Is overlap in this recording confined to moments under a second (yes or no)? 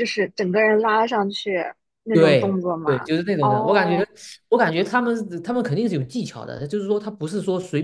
no